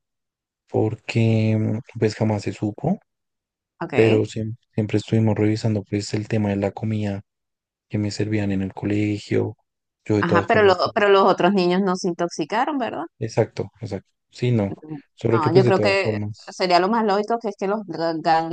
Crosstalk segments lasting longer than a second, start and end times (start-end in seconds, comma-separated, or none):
15.3-16.9